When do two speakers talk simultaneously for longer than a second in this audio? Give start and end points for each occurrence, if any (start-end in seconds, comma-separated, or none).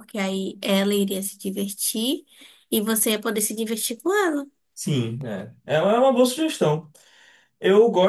none